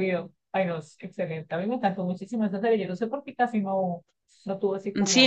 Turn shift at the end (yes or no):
yes